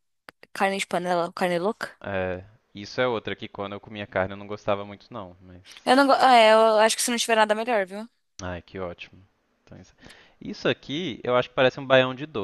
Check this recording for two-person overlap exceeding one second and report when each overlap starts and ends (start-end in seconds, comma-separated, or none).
none